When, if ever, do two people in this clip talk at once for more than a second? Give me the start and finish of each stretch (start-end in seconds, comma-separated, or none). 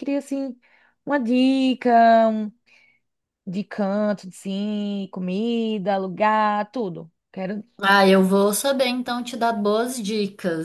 none